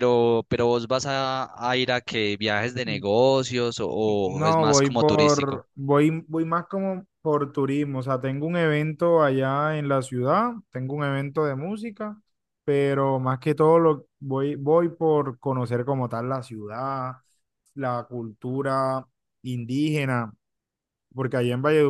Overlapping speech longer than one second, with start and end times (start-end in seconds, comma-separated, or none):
4.2-5.7